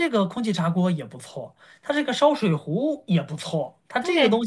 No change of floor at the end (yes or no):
yes